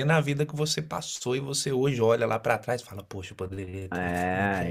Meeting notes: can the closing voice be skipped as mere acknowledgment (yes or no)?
no